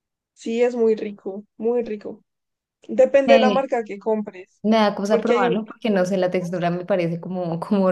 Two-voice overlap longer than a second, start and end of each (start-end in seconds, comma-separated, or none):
5.1-6.6